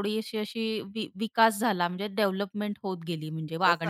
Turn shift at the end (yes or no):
yes